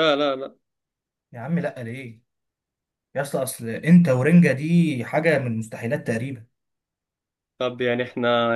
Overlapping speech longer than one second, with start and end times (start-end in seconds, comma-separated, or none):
none